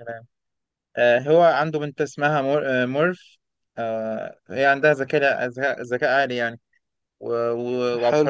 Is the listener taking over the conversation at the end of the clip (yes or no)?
no